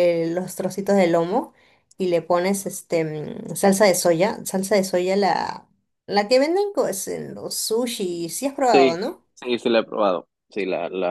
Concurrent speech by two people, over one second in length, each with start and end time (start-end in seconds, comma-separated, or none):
none